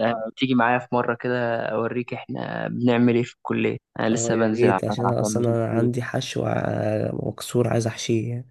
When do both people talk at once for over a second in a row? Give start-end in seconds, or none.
4.1-5.9